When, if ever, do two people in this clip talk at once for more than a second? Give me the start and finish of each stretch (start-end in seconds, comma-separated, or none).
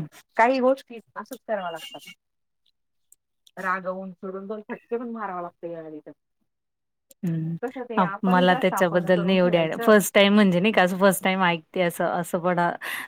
8.0-9.9